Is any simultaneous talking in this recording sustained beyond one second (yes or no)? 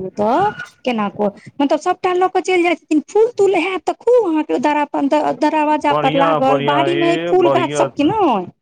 yes